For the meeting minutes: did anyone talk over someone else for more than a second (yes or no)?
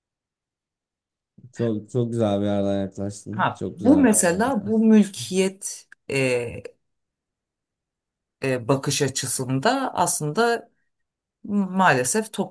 yes